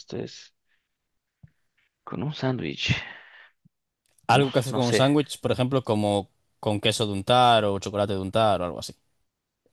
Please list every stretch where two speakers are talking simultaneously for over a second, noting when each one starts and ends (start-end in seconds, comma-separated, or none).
none